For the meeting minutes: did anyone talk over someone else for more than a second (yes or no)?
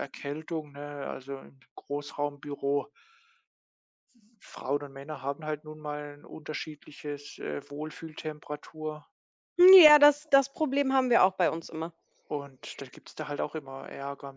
no